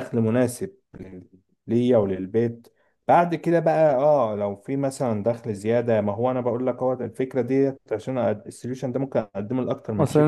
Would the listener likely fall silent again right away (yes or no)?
no